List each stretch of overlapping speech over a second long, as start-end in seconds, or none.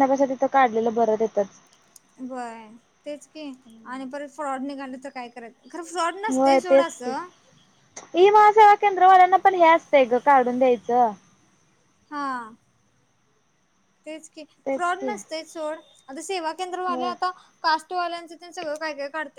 none